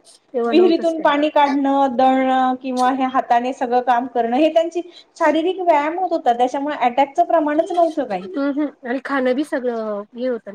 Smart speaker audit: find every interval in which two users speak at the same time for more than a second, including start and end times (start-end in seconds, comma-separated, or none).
none